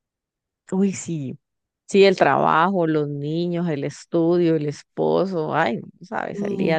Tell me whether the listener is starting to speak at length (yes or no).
yes